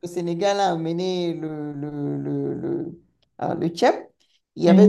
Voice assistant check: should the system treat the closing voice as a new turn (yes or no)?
no